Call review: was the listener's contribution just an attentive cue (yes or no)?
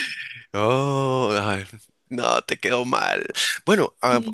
yes